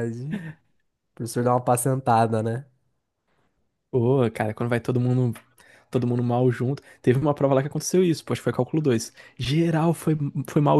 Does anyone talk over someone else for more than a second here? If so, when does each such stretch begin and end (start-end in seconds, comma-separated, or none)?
none